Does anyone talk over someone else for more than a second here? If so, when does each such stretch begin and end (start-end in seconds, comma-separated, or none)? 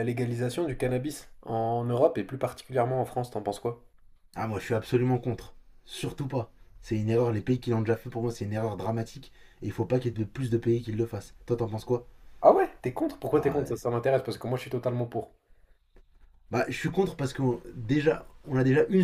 none